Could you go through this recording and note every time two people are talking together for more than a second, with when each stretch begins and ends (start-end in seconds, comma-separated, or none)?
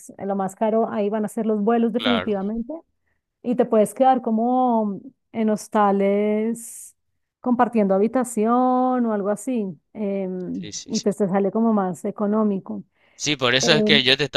none